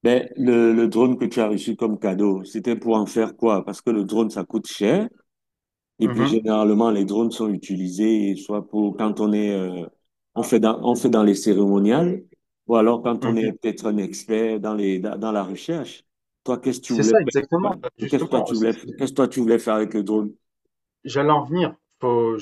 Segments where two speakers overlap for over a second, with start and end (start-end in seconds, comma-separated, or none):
16.9-19.1